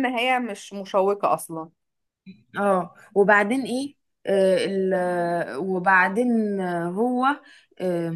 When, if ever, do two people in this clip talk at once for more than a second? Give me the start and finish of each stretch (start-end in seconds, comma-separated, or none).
none